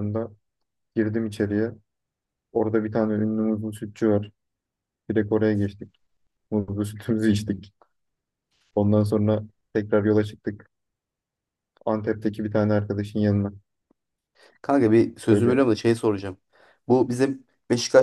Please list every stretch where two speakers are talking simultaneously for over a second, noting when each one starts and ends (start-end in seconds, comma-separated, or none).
none